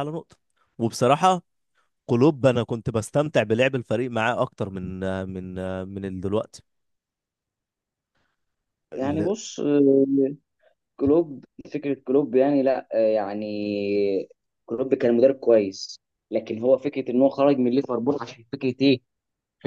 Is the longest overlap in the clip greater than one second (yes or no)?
no